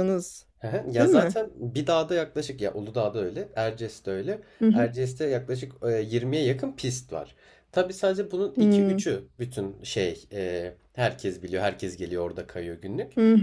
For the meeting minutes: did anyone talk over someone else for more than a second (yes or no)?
no